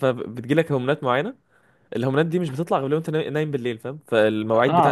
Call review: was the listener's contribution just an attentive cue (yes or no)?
no